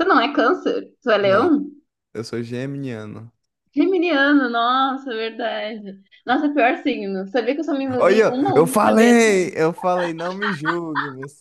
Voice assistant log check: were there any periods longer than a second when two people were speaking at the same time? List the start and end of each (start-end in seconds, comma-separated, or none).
8.0-9.6